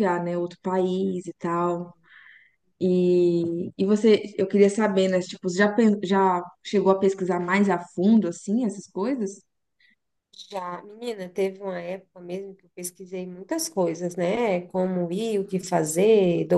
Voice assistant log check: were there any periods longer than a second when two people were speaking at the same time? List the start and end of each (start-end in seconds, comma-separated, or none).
none